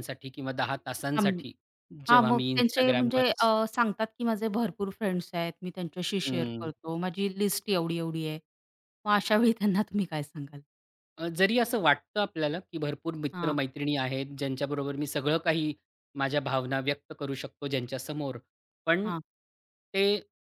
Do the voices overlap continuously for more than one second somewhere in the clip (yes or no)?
yes